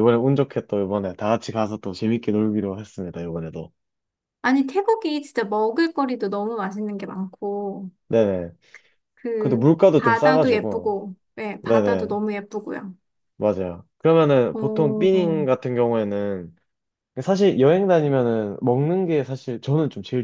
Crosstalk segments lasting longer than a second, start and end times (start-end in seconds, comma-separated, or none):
9.4-10.9